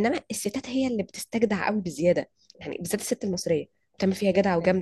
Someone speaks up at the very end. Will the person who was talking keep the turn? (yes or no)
yes